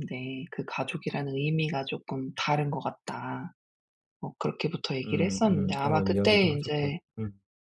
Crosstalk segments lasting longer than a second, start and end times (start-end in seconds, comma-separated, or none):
5.0-7.0